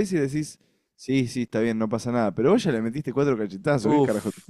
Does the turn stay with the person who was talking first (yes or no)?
no